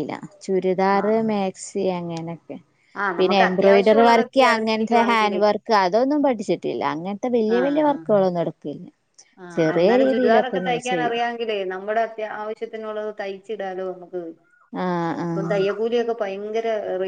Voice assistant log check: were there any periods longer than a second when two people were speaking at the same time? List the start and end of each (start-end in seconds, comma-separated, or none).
3.2-5.4